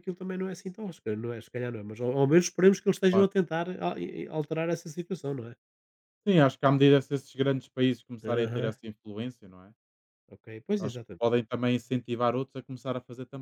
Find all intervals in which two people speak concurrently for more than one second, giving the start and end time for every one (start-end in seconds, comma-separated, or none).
none